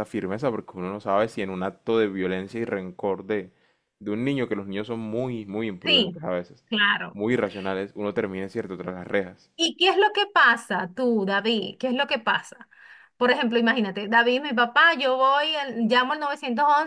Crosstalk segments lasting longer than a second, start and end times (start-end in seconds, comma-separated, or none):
none